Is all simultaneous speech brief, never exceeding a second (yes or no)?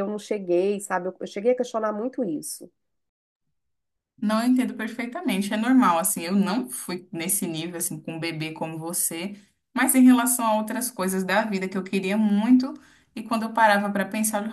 yes